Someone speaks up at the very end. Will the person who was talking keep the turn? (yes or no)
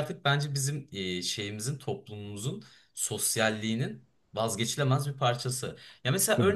yes